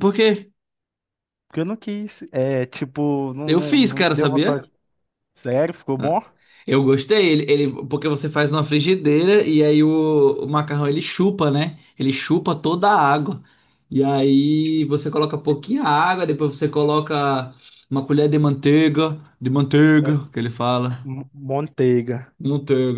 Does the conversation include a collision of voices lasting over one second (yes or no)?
yes